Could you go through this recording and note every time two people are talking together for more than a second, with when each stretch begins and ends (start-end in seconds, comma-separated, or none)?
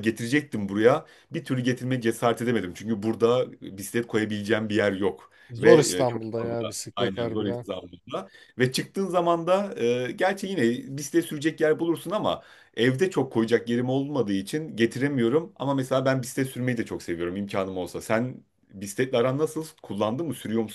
5.5-7.7